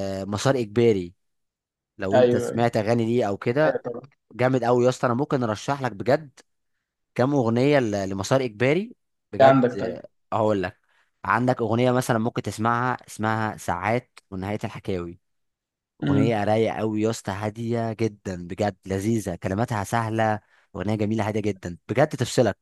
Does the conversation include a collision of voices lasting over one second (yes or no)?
no